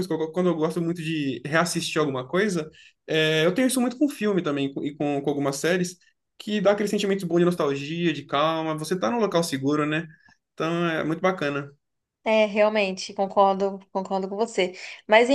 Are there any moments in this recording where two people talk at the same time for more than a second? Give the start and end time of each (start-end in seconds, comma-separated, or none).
none